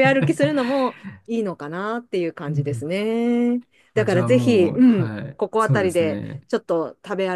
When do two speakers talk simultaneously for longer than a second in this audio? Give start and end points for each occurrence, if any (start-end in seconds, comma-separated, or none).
3.9-6.5